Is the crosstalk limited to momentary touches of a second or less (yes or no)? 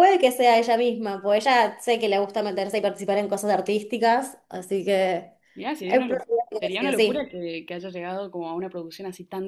no